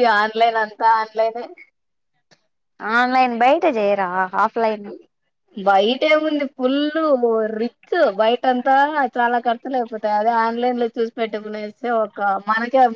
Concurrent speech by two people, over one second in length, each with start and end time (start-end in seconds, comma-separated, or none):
none